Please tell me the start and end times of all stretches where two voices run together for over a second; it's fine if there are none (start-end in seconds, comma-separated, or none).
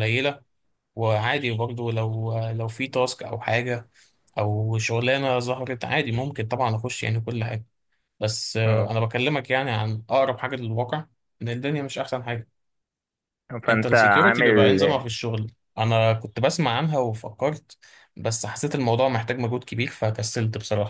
13.7-15.0